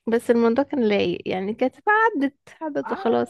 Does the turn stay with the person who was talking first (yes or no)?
no